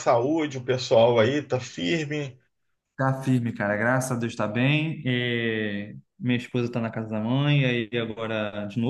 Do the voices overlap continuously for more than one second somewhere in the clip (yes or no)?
no